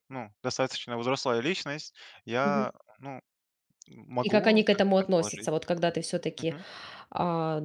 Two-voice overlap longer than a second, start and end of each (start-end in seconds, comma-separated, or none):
4.2-5.5